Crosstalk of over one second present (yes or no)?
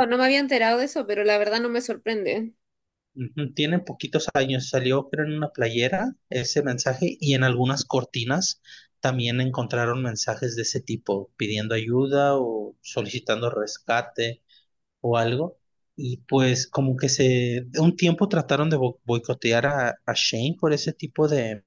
no